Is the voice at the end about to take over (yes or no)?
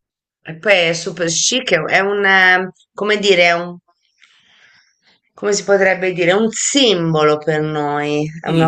yes